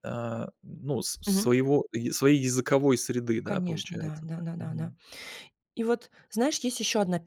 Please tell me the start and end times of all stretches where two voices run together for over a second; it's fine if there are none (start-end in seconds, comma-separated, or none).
3.4-4.9